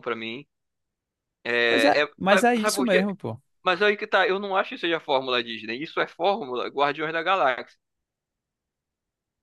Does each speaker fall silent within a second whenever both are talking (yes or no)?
no